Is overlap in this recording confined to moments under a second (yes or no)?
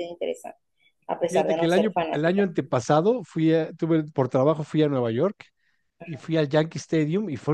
no